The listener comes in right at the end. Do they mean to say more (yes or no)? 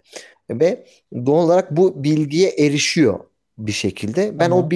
no